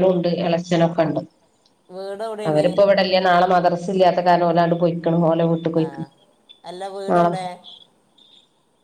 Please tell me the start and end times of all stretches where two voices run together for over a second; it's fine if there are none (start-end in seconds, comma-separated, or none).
none